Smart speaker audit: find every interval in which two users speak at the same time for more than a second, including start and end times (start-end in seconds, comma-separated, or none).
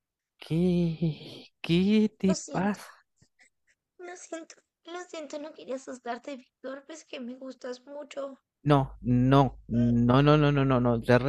none